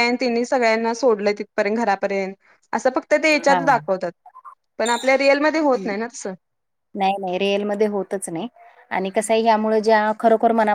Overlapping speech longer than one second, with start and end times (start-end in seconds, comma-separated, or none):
none